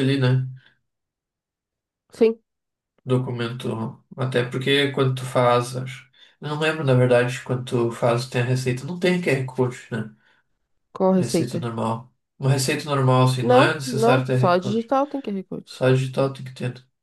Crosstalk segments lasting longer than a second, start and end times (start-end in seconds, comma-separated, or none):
13.4-14.9